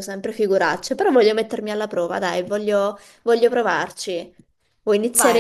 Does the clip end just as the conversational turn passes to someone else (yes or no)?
yes